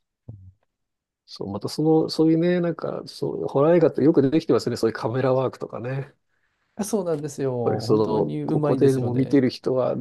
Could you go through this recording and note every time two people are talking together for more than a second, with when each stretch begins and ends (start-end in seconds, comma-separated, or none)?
7.6-9.4